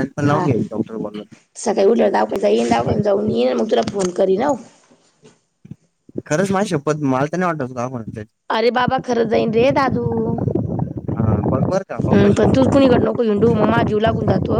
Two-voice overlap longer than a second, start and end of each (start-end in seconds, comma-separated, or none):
none